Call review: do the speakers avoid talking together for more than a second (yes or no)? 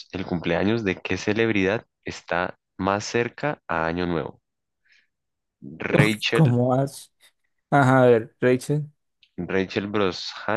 yes